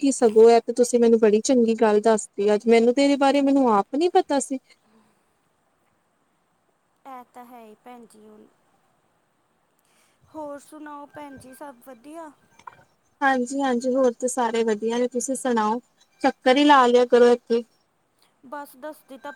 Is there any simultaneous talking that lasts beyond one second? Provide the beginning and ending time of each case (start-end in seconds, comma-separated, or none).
none